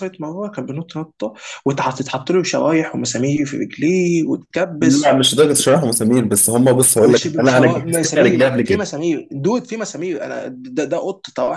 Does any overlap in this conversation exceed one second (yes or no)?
yes